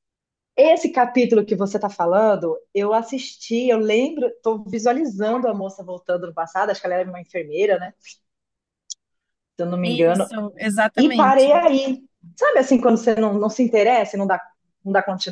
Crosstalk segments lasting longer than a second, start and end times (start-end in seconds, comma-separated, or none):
none